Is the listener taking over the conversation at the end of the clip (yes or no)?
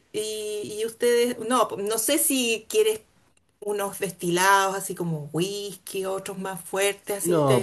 yes